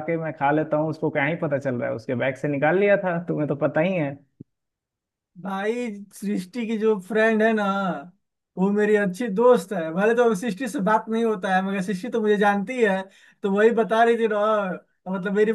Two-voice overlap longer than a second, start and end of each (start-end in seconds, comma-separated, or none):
none